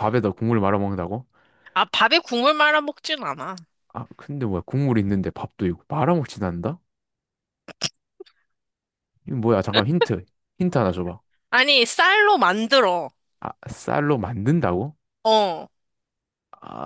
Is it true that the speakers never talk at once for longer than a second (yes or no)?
yes